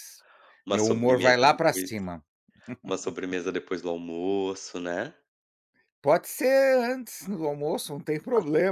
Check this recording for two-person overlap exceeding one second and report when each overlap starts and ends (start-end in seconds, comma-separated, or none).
0.7-1.9